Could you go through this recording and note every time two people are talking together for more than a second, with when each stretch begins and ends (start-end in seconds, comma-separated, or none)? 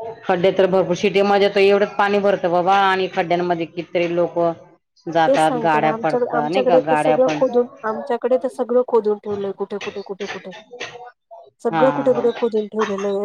5.3-7.4